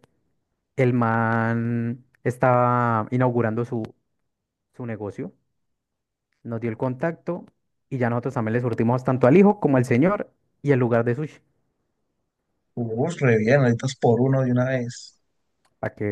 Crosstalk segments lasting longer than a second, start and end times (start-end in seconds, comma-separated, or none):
none